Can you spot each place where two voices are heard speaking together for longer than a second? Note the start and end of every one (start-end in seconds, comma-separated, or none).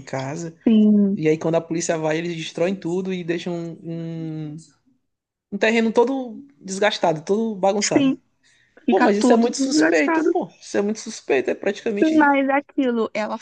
8.9-10.3